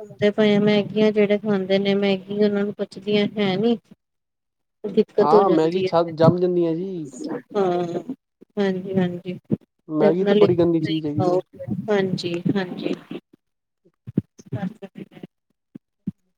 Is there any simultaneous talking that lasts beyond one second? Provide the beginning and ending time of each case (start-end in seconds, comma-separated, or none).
5.2-7.1, 10.0-11.4